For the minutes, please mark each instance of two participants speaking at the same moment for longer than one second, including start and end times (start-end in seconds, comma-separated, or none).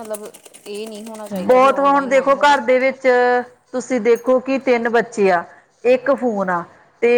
1.3-2.6